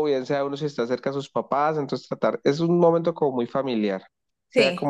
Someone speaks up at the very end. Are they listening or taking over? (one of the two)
listening